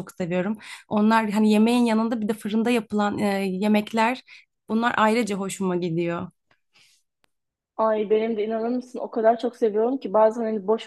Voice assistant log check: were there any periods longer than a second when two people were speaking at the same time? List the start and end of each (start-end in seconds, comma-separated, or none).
none